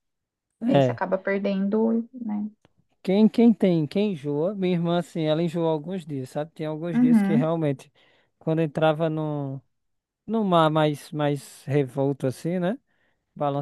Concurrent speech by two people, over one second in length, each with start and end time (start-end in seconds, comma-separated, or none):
none